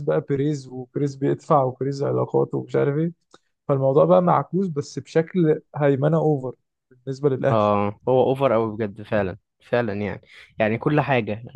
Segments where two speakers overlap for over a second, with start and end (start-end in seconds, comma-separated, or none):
none